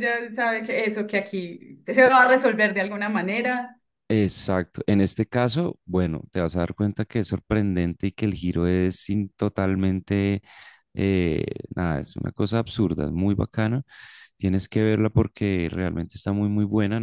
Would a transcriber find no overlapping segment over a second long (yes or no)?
yes